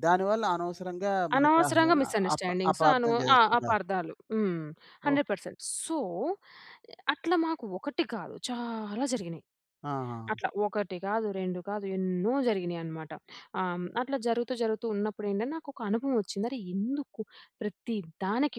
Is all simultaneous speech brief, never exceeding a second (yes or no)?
no